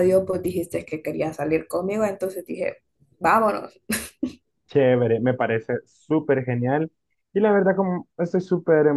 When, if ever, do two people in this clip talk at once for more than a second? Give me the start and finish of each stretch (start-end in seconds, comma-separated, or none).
none